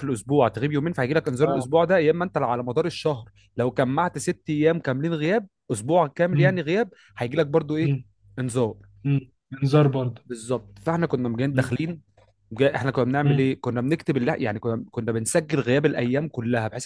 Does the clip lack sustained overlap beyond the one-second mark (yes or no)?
yes